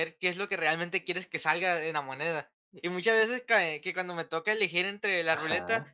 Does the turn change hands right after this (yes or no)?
no